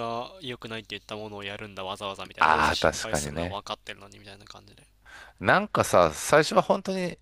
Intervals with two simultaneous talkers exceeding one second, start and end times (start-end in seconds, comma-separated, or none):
2.4-3.6